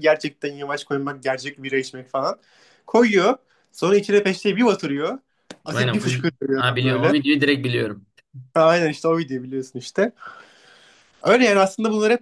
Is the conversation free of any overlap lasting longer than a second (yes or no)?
no